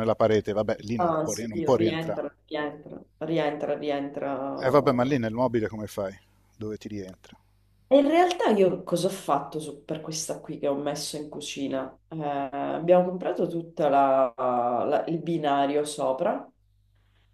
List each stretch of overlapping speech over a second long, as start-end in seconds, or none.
1.0-2.2